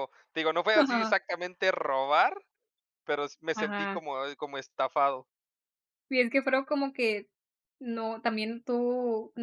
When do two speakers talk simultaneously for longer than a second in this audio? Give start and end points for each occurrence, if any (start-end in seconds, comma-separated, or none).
none